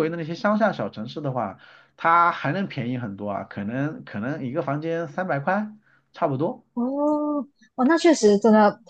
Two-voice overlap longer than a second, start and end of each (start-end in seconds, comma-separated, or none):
none